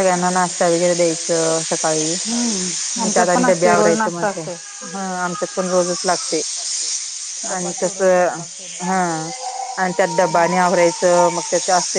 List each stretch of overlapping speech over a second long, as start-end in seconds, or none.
3.1-4.5